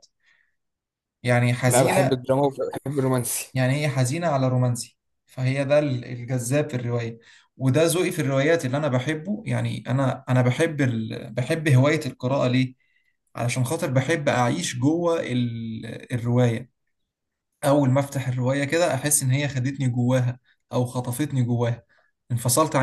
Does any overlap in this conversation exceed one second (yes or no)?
no